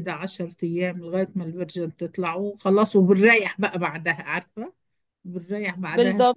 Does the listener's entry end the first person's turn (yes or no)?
yes